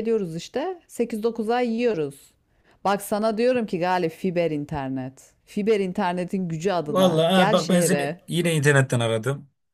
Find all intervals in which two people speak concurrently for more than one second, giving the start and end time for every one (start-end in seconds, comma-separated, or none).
6.9-8.2